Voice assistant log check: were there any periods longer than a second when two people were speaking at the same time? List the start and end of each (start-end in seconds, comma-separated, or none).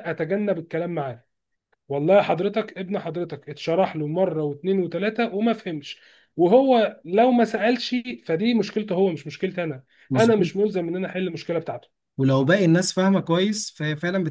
none